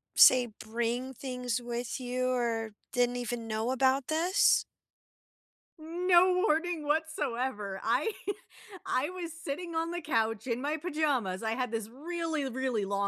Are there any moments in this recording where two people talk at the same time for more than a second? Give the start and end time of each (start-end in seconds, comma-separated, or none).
none